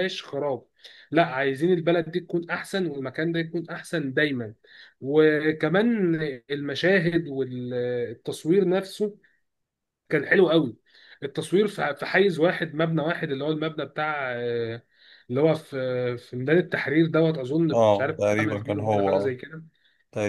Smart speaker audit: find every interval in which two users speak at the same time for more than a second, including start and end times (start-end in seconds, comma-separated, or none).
17.7-19.4